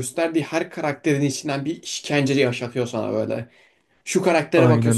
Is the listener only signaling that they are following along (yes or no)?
yes